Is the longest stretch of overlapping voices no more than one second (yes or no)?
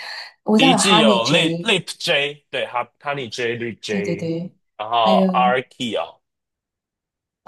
no